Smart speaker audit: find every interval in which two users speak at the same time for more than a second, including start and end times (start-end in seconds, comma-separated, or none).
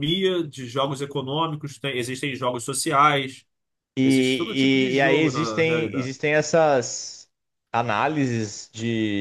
4.0-6.1